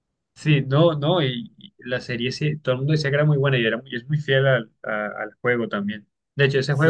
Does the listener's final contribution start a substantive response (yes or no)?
no